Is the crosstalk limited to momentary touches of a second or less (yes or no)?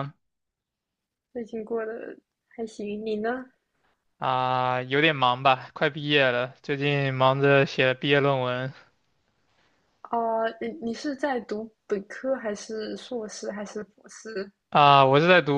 yes